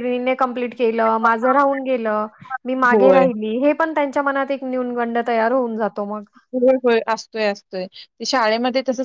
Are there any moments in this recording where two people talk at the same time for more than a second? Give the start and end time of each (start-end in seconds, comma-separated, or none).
none